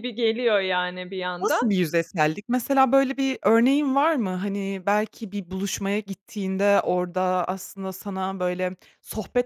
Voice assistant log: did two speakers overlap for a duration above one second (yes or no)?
no